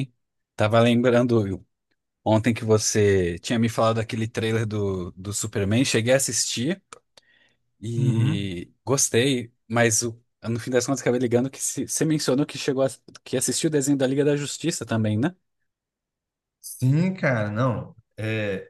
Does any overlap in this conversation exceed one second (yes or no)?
no